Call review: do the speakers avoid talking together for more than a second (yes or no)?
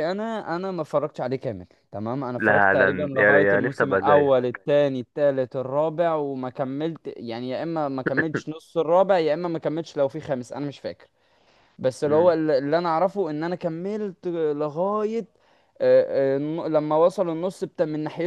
no